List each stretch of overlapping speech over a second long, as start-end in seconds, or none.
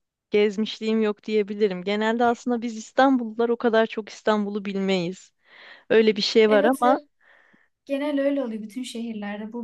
none